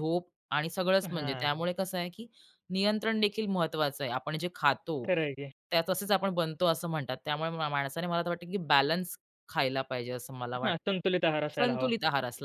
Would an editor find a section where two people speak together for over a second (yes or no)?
no